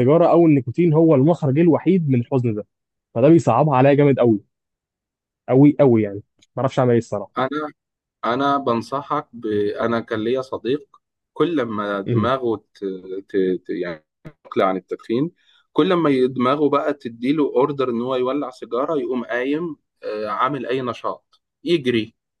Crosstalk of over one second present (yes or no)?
no